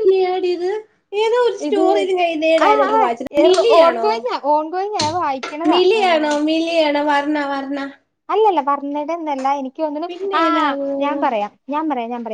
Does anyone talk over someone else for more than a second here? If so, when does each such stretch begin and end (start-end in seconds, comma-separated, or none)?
none